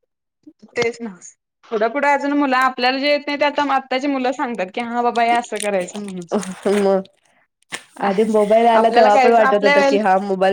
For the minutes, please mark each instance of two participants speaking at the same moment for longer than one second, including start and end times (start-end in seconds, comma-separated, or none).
none